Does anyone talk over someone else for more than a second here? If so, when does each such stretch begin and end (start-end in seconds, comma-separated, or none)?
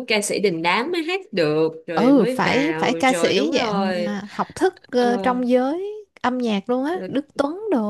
1.9-4.2